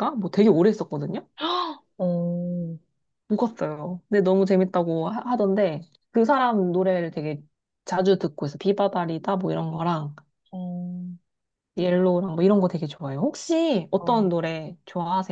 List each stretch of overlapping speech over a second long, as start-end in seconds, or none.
none